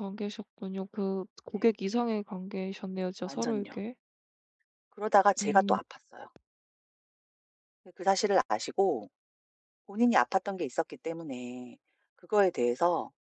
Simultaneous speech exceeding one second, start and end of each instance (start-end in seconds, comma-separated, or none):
none